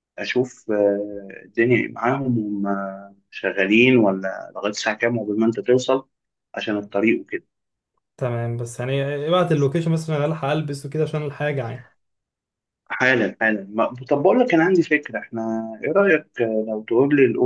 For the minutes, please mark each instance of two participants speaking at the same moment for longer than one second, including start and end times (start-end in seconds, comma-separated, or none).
none